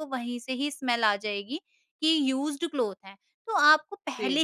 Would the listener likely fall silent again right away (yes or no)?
yes